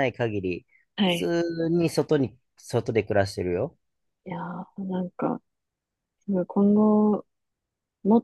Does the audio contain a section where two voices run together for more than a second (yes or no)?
no